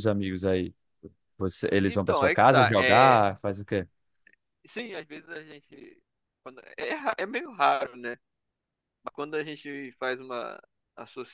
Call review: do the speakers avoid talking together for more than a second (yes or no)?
no